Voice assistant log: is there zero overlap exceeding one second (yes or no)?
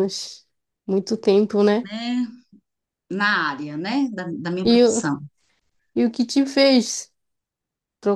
yes